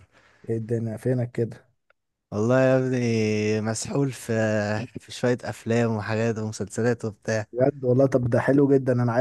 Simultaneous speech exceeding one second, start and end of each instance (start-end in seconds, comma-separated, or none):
none